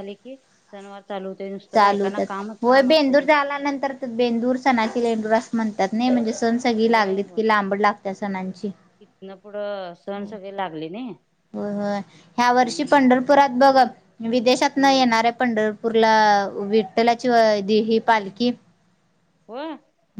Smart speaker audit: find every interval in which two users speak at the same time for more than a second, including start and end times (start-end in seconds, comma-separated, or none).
1.7-3.8